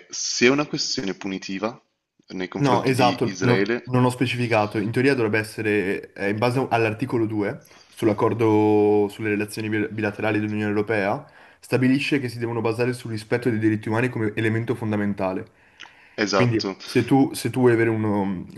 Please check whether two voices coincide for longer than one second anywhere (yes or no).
yes